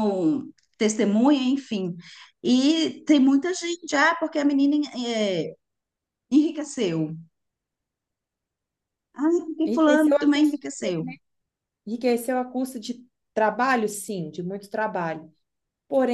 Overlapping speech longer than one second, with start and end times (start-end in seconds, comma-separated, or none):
9.7-10.9